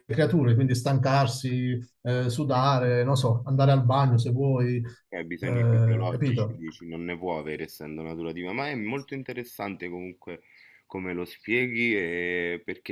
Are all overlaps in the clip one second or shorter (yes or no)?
no